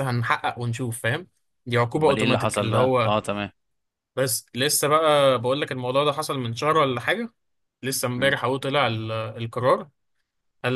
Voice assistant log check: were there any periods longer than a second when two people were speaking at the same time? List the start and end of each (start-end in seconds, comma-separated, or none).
1.9-3.2